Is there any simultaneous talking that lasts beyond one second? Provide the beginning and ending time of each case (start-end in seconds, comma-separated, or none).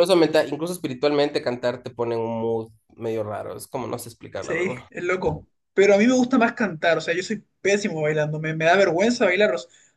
none